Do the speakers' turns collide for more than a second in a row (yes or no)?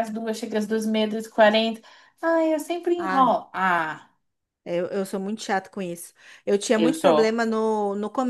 no